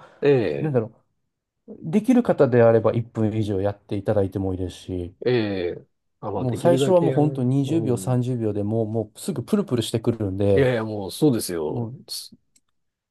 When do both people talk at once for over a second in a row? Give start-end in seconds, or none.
6.3-8.2